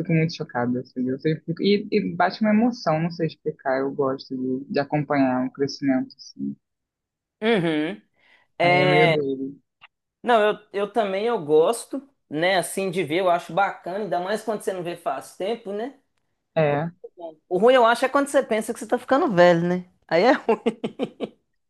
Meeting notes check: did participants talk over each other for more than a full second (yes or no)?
no